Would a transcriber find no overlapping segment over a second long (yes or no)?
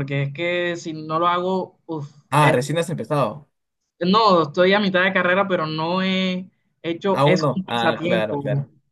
no